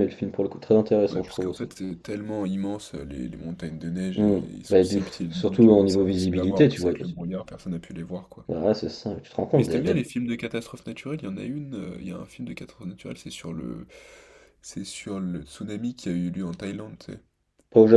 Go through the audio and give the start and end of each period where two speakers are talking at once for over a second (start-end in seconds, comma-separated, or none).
4.2-6.9